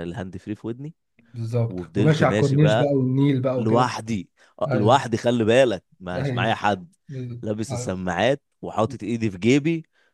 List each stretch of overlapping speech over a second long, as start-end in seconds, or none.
1.7-2.9